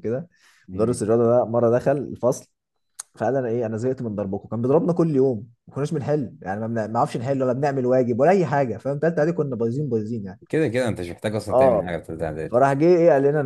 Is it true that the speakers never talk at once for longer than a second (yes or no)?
yes